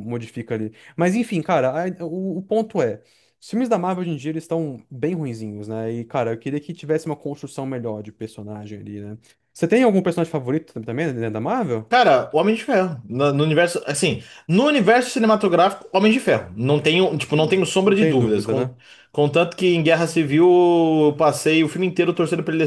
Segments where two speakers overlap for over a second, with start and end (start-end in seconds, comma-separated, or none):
17.3-18.7